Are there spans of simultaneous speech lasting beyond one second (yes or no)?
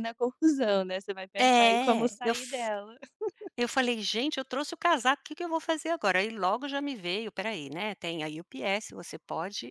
yes